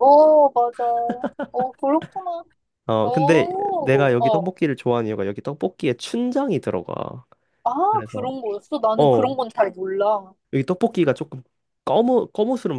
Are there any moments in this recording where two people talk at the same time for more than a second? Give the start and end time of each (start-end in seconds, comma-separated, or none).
3.0-4.5